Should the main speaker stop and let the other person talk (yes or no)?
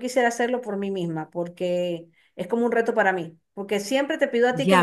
yes